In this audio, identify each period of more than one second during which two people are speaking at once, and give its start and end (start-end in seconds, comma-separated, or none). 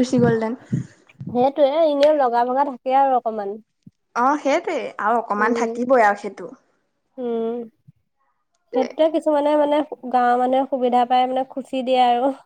none